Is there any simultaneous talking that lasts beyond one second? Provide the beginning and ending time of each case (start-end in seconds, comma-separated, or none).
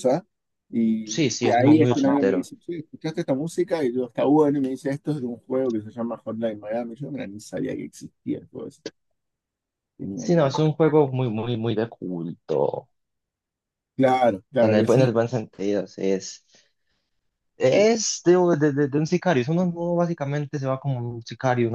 1.0-2.5